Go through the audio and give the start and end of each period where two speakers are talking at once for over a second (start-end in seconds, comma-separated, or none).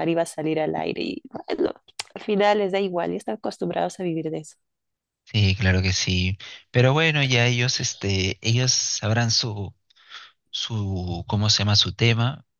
none